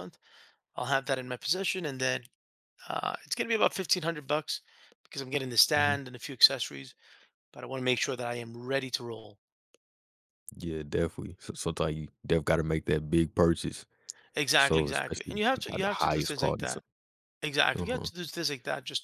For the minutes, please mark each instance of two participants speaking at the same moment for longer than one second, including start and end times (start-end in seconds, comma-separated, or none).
14.6-16.8